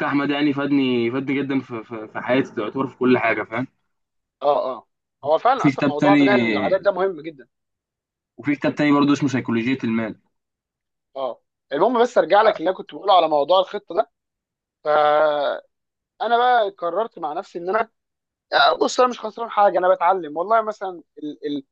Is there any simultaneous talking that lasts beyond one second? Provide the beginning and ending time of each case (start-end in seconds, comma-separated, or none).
5.6-6.9